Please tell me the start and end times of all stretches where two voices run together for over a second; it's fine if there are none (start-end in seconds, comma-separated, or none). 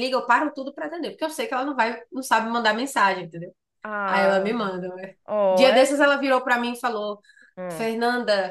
none